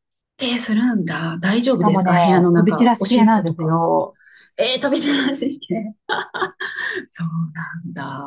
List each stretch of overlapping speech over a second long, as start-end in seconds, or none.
1.6-3.8